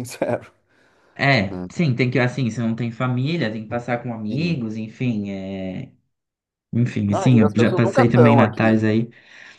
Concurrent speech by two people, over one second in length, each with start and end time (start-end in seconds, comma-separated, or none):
7.1-8.8